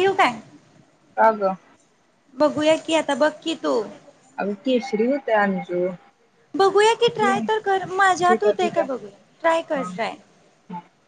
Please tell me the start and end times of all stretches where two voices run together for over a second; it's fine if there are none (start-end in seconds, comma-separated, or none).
7.2-8.9